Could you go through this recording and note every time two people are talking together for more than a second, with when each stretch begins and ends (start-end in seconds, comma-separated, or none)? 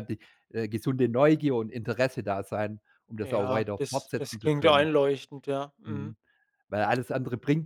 3.2-4.9